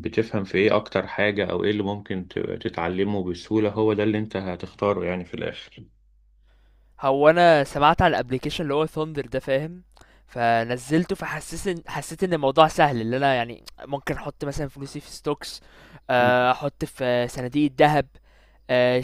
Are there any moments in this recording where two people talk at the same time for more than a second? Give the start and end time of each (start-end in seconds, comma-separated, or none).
none